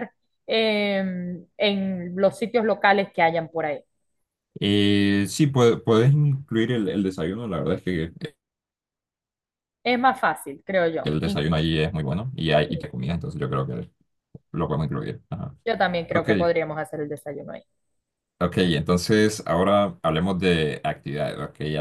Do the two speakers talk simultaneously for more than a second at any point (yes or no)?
no